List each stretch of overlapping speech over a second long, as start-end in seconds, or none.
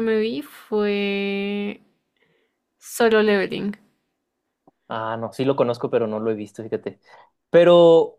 none